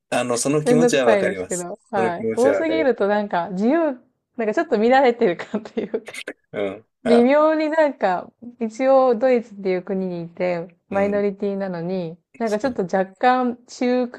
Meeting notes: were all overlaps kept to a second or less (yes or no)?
no